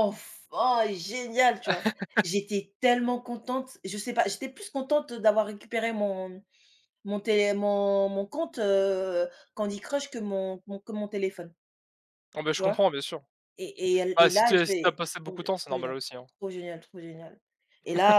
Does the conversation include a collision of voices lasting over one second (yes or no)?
yes